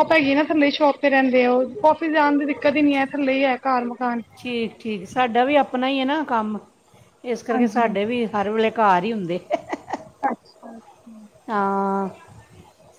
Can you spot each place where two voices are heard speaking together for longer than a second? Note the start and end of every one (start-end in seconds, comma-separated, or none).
none